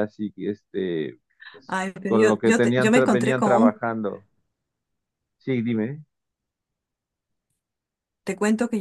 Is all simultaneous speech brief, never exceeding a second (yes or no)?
no